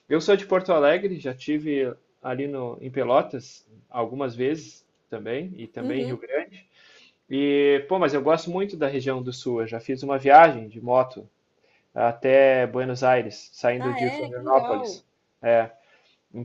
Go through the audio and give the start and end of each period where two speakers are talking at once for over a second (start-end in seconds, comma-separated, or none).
13.8-15.0